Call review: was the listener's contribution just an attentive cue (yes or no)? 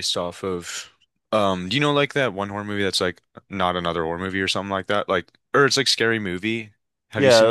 no